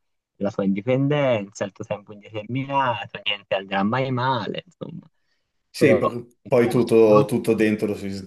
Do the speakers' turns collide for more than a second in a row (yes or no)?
yes